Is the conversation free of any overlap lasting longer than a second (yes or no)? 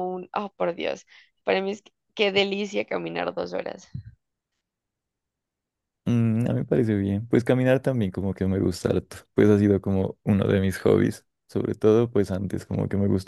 yes